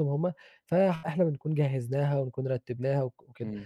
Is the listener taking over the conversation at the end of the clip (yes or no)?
no